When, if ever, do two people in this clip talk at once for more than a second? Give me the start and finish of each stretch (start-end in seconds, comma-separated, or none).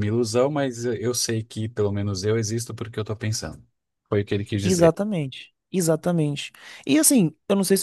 none